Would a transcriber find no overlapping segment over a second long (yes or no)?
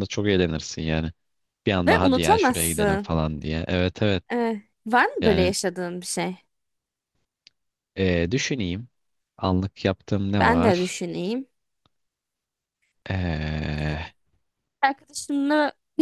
no